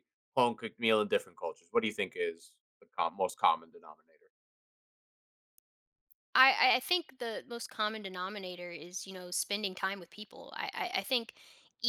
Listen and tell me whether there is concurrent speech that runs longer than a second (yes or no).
no